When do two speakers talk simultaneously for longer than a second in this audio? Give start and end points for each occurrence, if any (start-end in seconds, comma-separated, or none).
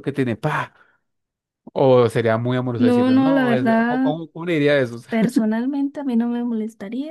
2.8-4.1